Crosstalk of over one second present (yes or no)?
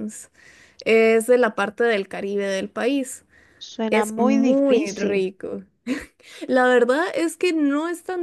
yes